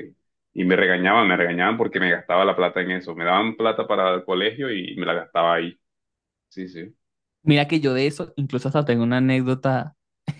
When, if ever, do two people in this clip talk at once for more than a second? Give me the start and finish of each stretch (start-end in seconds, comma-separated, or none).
none